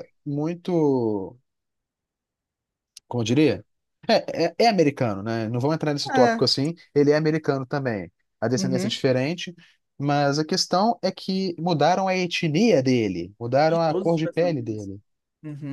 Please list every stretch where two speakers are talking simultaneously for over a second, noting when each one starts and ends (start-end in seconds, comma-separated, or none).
13.7-14.9